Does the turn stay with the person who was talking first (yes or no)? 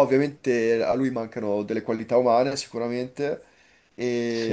yes